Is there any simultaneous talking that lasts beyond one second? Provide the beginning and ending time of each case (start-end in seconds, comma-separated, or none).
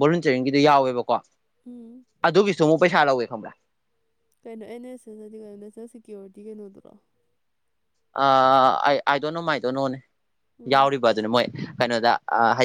none